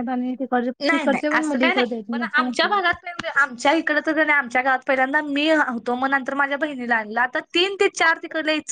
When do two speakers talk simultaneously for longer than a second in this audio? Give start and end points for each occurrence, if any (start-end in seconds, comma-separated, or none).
0.9-2.7